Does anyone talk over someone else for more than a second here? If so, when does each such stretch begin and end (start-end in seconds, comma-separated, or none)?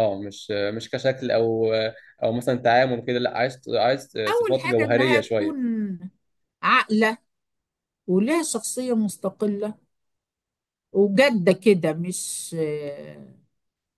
4.3-5.6